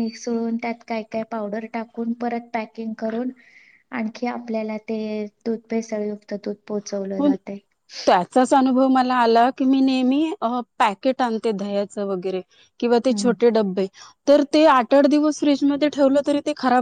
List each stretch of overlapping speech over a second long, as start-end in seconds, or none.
none